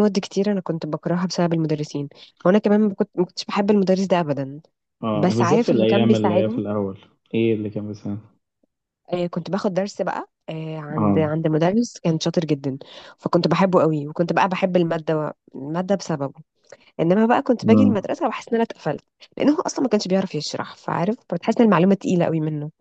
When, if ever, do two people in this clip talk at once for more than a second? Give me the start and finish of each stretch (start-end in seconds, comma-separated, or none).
5.1-6.6